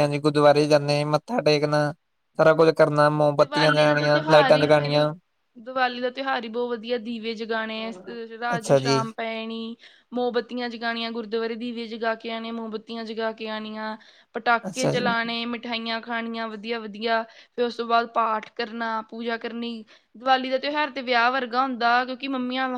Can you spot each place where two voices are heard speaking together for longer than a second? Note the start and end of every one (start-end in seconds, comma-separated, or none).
3.4-5.0